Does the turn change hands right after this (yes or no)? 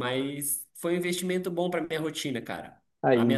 no